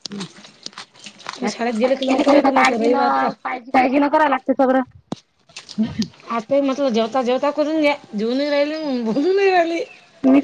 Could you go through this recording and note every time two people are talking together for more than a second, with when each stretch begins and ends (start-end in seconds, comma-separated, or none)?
1.5-3.1